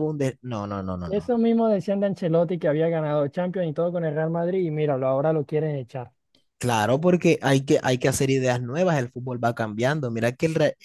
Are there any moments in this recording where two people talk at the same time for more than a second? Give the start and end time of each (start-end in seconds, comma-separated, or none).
none